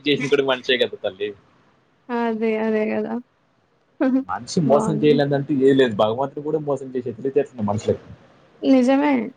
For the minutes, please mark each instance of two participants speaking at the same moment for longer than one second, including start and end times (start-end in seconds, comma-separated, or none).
none